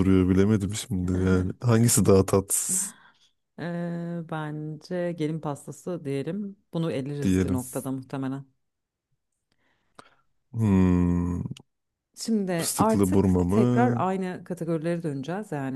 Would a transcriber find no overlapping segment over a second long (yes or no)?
no